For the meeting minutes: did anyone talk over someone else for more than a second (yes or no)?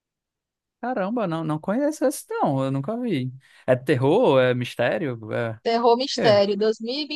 no